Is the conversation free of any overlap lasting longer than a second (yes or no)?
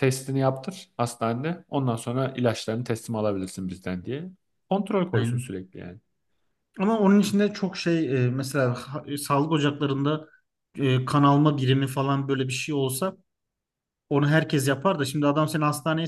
yes